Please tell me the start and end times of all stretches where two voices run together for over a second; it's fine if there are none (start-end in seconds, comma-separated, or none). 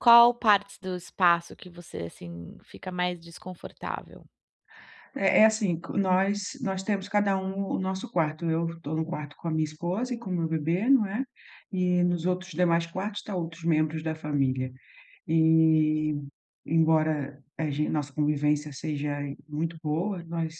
none